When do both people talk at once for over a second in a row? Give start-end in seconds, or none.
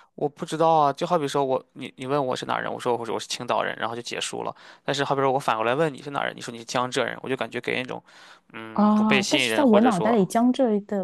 8.7-10.2